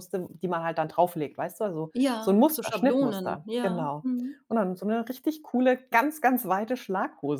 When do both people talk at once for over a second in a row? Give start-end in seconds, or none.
1.9-4.1